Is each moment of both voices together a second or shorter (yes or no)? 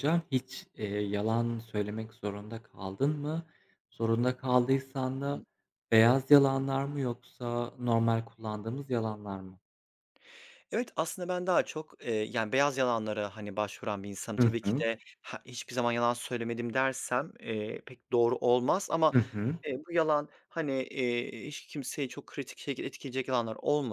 yes